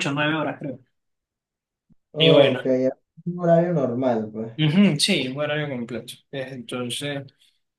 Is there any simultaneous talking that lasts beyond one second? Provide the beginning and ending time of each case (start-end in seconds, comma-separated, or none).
none